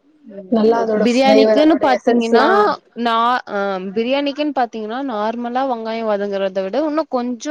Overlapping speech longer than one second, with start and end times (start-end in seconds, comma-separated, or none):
1.1-2.4